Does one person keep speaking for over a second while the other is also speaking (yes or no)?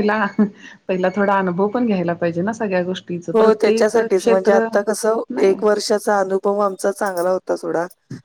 no